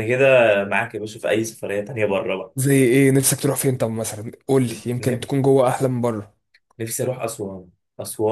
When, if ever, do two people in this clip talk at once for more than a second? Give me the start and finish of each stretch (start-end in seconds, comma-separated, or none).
none